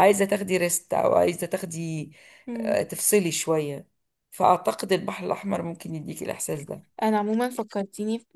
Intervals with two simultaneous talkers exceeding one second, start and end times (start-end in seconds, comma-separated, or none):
none